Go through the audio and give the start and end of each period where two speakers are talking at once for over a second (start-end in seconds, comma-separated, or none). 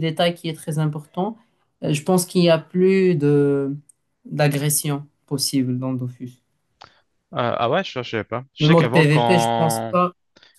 8.6-9.9